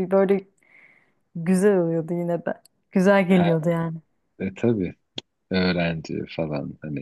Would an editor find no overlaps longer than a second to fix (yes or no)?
yes